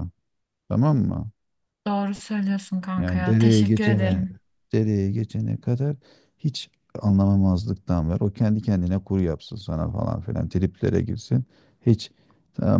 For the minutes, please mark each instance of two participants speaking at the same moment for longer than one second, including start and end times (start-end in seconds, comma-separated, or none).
3.0-4.2